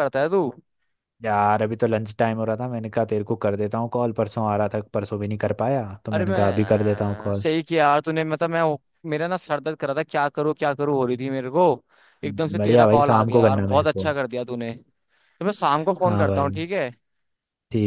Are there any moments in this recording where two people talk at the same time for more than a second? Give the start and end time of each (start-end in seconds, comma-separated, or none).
6.1-7.4, 12.6-14.1